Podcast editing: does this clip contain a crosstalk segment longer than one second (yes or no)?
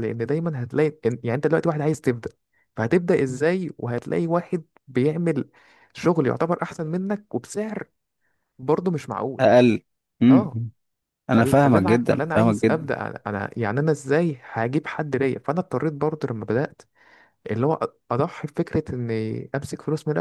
yes